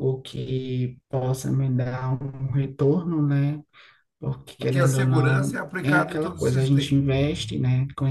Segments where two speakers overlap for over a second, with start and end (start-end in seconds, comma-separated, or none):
4.6-7.0